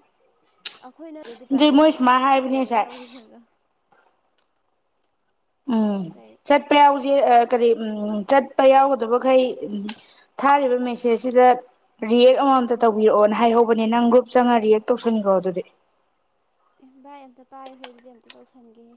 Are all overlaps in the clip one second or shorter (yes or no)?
no